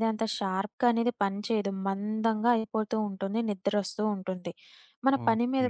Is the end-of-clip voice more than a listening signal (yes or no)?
no